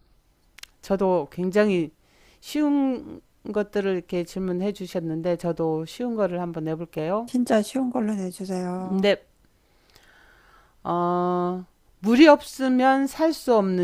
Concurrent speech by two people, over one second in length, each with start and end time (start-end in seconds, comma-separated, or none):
none